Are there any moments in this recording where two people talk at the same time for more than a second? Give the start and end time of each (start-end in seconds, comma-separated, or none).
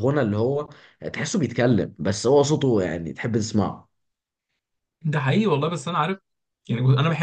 none